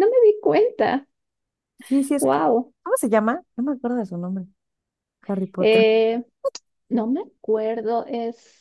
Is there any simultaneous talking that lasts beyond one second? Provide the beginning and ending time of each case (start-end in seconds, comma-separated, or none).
none